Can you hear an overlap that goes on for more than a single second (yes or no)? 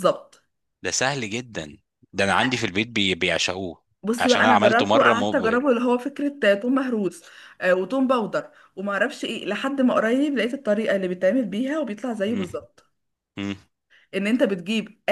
yes